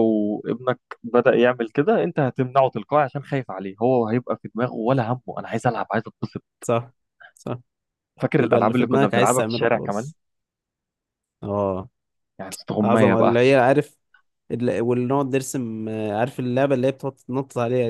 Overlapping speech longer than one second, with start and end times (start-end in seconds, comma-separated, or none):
8.4-10.1